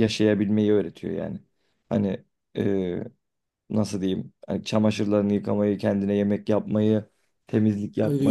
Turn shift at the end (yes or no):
yes